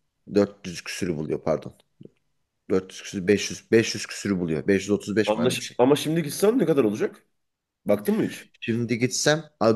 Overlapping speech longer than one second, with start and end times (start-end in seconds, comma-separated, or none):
none